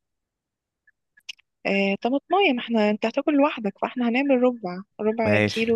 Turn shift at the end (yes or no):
yes